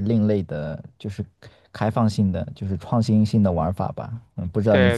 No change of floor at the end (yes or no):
no